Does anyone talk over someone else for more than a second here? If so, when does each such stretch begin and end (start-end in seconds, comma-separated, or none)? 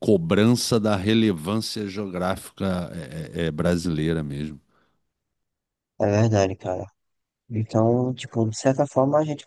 none